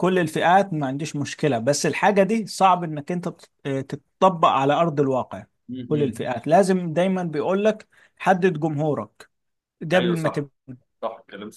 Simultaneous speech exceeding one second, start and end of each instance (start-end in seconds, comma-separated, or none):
none